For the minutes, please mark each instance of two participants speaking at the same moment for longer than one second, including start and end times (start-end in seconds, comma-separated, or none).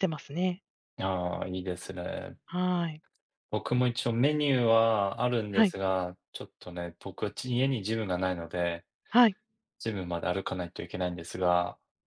none